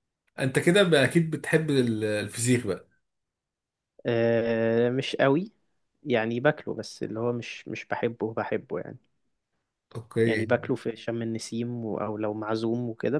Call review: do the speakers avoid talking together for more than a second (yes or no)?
yes